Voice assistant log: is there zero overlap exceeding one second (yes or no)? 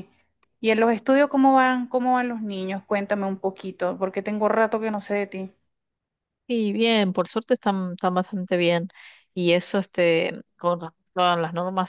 yes